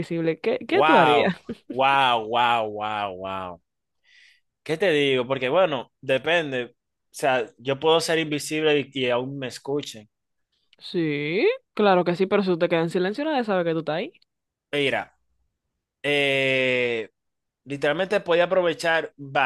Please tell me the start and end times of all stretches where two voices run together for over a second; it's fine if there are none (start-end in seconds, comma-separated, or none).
none